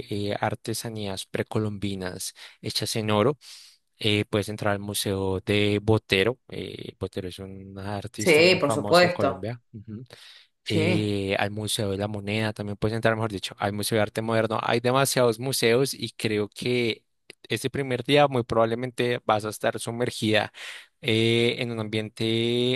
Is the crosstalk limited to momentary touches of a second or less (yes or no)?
no